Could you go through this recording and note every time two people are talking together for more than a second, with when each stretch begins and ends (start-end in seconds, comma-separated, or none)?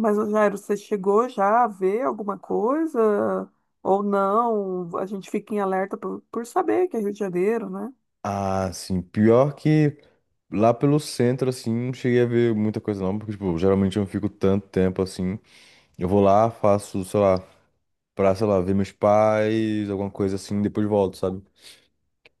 none